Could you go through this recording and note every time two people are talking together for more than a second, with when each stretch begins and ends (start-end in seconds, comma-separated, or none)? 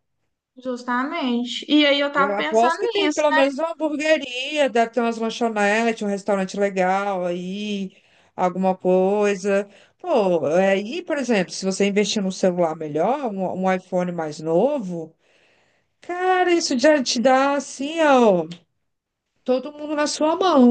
2.1-3.4